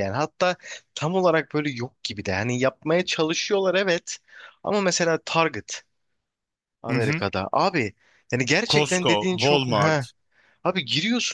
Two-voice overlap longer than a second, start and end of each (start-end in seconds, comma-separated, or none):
8.7-10.0